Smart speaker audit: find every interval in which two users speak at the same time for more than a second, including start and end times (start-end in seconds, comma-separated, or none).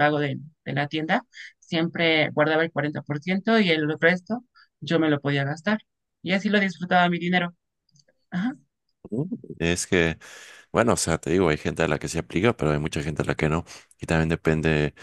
none